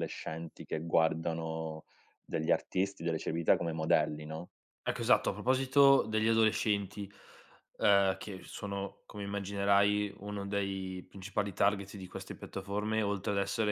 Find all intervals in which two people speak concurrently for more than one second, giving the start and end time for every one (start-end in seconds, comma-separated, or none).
none